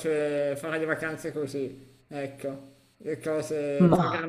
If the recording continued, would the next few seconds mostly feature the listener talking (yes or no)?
no